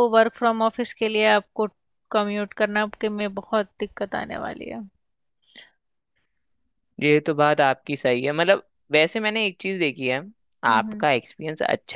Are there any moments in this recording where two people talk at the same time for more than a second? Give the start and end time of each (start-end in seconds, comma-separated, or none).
none